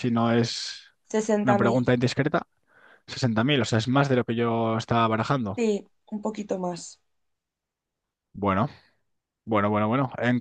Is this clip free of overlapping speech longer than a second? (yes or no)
yes